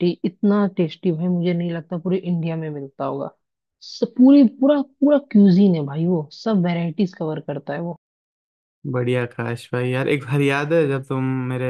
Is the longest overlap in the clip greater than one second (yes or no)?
no